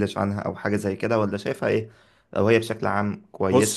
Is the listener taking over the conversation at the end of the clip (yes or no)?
no